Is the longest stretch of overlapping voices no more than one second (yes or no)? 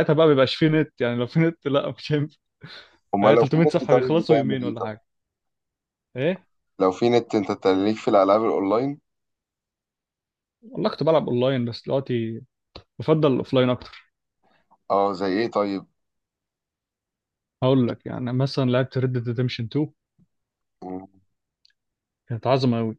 no